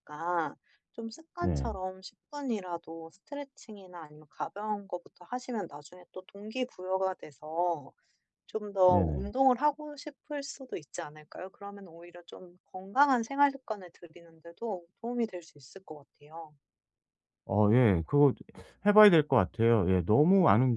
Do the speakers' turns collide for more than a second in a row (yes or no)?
no